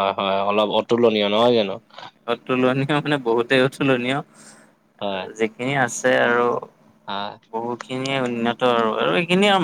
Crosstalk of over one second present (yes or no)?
no